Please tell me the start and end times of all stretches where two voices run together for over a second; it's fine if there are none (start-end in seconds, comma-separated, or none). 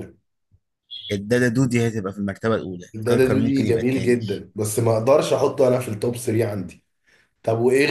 2.9-4.2